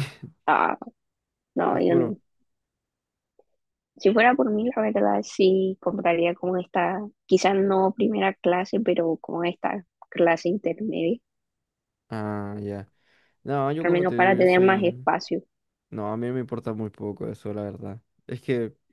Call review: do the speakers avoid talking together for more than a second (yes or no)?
no